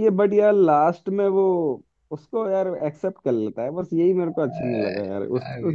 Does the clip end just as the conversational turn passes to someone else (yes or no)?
no